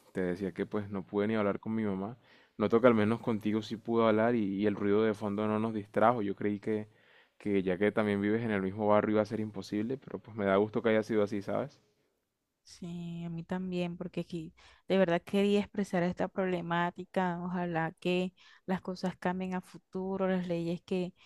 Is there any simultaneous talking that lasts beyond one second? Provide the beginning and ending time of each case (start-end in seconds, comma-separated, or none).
none